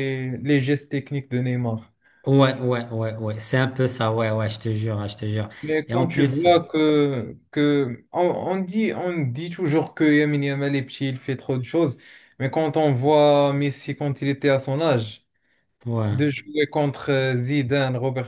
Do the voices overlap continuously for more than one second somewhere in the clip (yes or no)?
no